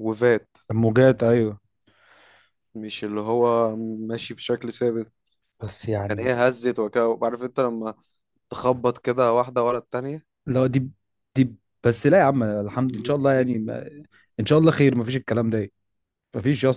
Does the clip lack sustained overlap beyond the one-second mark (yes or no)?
yes